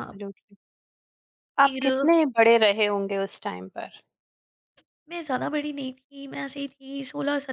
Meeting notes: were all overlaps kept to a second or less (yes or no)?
yes